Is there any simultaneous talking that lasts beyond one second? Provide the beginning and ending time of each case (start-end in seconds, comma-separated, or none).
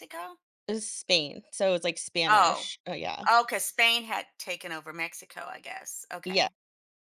none